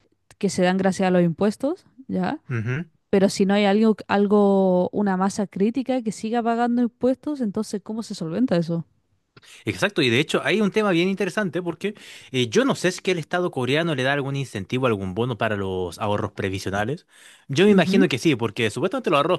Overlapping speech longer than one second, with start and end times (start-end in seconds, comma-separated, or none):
none